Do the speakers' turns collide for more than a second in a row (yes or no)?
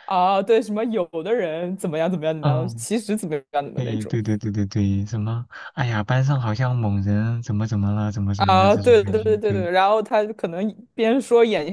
yes